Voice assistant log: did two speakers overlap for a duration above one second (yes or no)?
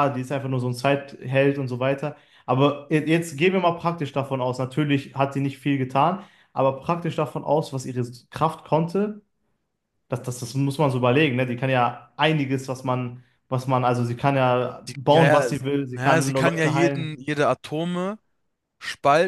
yes